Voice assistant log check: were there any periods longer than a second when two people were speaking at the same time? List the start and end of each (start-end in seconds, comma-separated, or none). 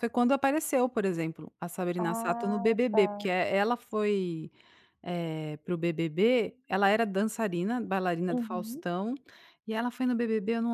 2.0-3.3